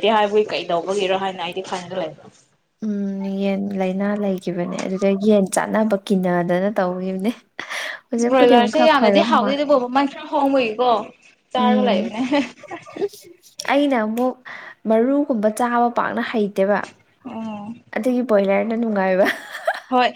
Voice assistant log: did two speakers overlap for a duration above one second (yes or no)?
yes